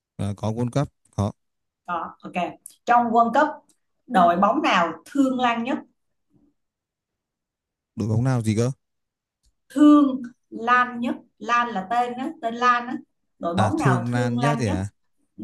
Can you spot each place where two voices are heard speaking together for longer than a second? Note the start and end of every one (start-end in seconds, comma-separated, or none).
13.6-14.8